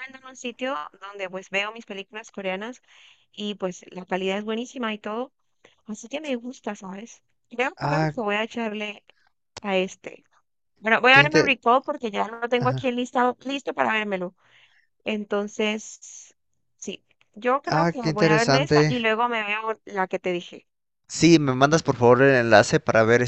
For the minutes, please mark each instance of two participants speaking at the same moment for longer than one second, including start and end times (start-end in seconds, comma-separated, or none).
17.7-19.1